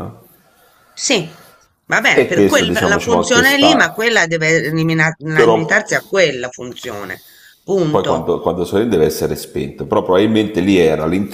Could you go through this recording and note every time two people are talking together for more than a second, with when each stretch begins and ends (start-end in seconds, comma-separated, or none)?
2.1-4.1